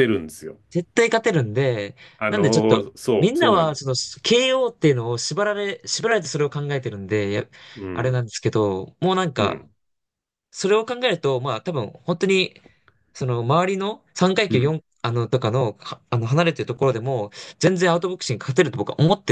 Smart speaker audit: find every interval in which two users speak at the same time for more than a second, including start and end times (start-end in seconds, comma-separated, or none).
2.2-3.9